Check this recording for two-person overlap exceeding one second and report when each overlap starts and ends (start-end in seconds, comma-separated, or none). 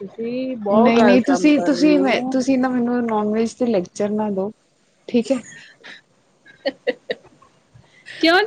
0.8-2.3